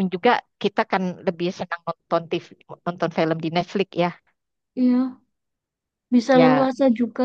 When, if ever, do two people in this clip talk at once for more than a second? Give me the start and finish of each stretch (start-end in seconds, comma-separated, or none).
none